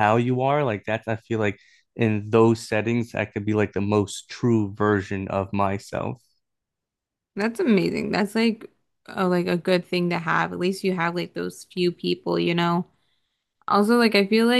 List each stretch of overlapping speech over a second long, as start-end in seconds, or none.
none